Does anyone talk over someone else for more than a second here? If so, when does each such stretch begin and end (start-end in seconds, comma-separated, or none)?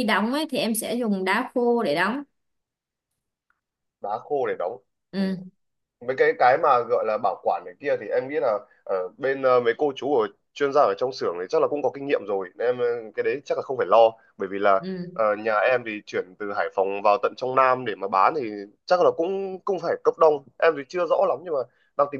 none